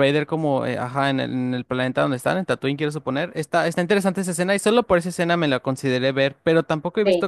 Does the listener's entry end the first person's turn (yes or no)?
no